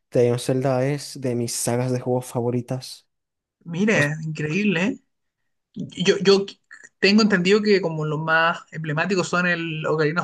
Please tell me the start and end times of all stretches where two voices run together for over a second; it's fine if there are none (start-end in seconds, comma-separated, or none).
none